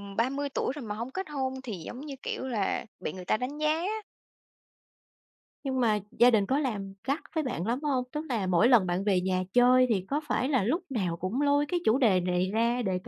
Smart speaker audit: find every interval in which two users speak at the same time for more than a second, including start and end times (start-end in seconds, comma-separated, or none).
none